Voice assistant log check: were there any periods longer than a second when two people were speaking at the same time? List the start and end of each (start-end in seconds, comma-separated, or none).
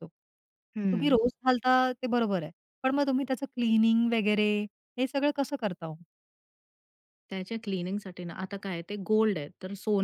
none